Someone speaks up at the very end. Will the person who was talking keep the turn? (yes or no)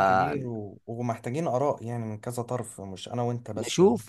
no